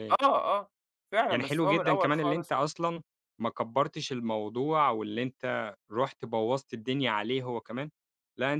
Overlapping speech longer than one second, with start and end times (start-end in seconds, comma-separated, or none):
1.3-2.5